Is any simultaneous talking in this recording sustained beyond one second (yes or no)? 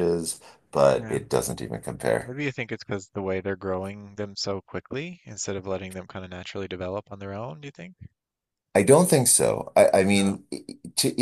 no